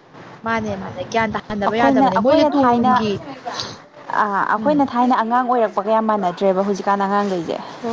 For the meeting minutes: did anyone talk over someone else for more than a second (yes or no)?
no